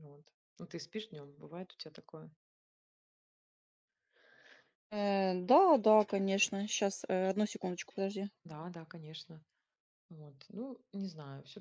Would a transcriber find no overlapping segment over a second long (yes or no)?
yes